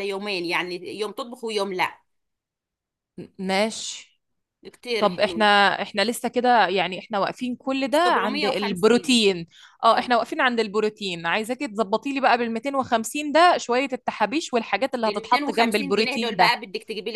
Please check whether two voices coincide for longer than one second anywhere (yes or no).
yes